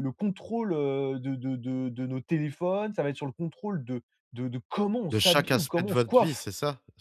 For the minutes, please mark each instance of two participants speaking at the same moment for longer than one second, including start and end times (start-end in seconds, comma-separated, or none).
5.1-6.5